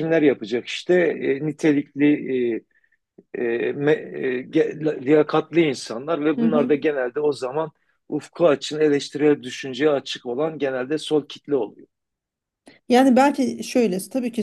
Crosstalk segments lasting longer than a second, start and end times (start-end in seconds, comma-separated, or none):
none